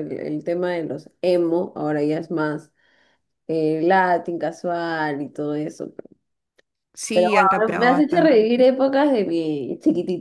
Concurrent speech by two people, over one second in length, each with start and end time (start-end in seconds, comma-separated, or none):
7.1-8.5